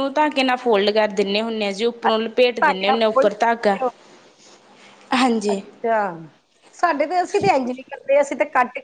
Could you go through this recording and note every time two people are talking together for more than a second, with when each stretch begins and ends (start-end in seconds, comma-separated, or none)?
none